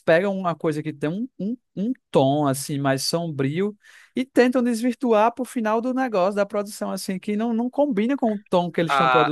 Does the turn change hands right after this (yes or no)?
yes